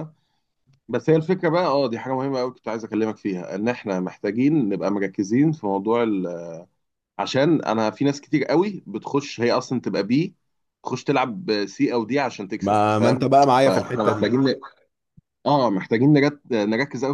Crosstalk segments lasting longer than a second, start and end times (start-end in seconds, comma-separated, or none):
12.6-14.3